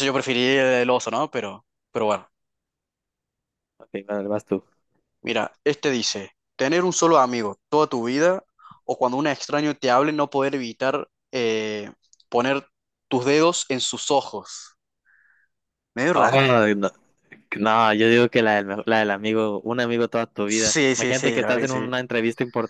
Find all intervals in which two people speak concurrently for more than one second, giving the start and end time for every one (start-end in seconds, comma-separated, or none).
20.5-21.9